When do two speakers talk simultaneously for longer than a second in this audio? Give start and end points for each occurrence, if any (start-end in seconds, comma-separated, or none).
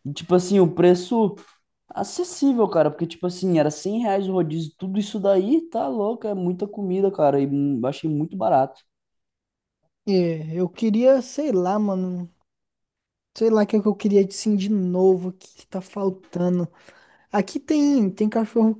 none